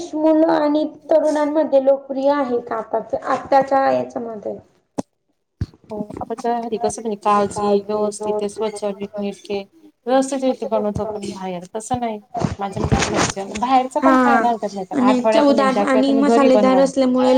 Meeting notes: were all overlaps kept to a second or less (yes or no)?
no